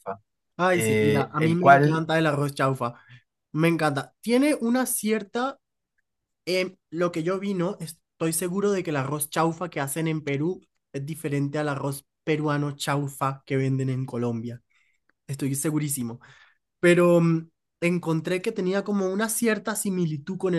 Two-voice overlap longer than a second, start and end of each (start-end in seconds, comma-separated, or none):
0.7-2.1